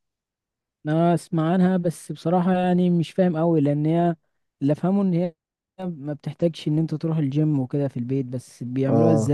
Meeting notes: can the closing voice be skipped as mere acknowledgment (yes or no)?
no